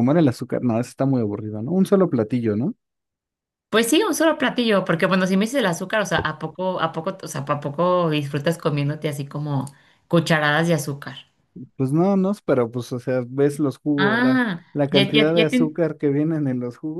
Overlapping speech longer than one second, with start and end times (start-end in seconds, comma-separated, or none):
14.0-15.8